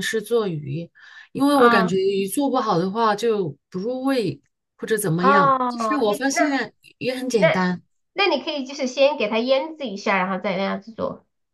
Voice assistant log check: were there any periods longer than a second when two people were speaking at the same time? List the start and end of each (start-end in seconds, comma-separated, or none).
5.2-6.6